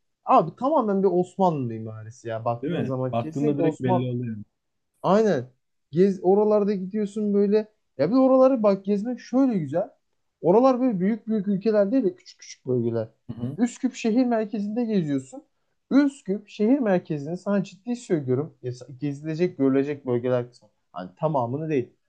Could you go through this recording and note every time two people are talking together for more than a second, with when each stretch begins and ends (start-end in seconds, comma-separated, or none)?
2.6-4.1